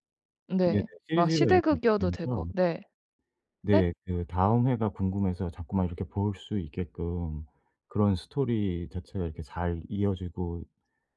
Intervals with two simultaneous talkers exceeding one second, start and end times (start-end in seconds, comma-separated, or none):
0.6-2.5